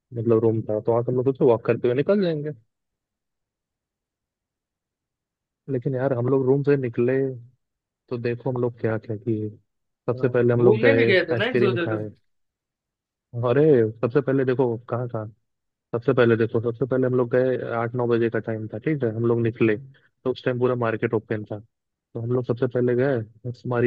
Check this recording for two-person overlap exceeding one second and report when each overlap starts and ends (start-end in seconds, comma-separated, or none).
10.1-12.0